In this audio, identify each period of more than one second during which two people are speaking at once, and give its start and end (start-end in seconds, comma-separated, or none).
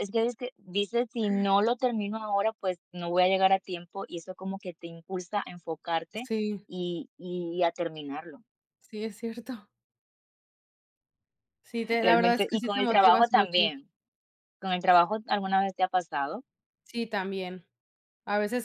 12.0-13.6